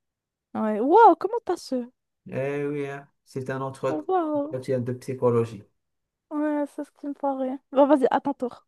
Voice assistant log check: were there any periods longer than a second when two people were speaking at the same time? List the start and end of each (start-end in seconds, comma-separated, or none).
none